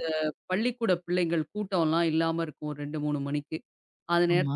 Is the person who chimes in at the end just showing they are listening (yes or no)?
yes